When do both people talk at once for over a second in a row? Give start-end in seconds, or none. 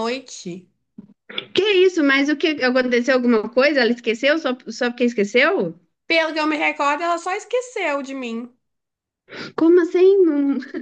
none